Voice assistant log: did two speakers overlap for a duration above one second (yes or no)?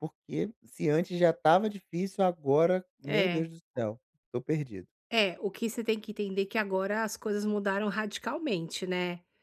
no